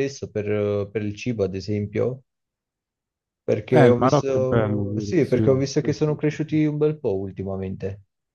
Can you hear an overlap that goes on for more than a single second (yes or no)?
yes